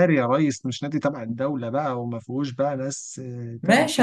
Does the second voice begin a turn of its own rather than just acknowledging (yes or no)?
yes